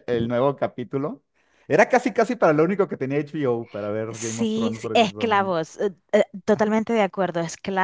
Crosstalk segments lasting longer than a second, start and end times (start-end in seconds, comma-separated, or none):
4.1-5.5